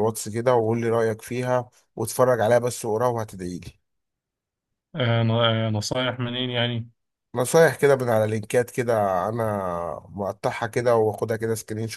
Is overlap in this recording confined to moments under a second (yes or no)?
yes